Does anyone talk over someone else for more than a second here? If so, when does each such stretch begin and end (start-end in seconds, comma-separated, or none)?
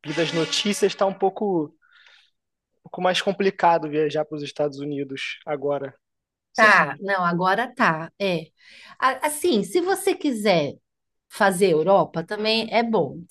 none